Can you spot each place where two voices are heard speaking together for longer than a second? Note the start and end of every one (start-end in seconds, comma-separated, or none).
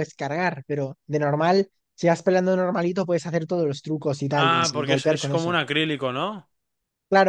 4.3-5.6